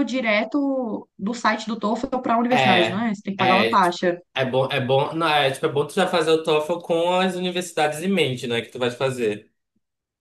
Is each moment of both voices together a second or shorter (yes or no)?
no